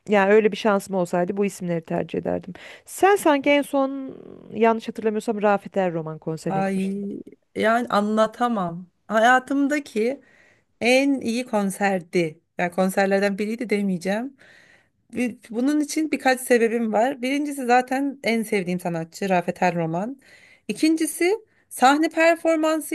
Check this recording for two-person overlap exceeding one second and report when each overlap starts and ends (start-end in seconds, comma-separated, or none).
none